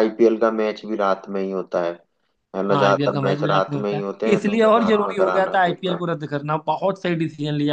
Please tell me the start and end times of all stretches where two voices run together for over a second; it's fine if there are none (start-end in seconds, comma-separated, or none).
2.7-5.8